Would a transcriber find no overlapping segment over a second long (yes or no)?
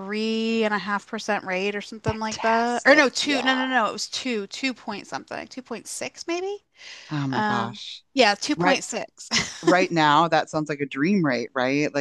no